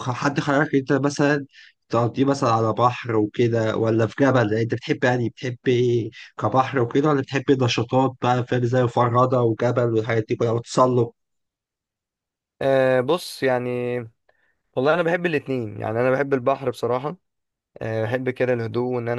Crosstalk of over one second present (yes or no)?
no